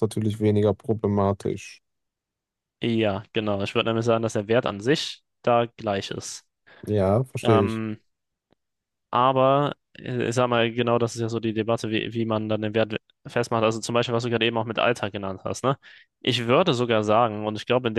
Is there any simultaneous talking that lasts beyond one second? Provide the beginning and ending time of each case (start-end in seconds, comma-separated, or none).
none